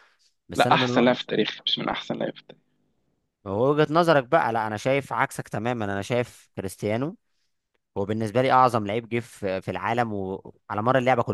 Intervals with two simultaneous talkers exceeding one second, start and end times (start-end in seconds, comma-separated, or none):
none